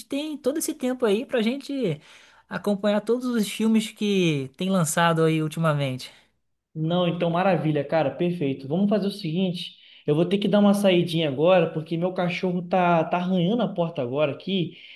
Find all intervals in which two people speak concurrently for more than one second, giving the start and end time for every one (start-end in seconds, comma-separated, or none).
none